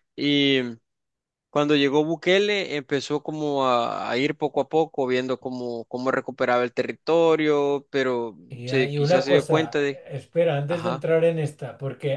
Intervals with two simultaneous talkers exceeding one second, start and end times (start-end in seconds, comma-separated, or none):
8.5-10.0